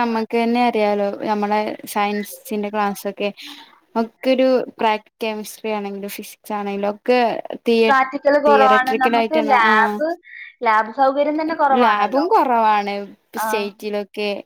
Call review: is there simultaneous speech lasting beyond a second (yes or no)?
yes